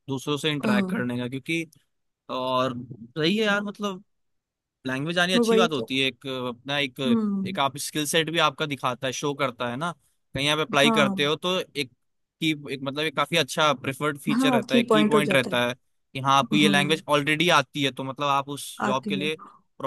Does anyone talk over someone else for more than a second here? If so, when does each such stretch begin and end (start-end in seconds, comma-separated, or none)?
14.3-15.6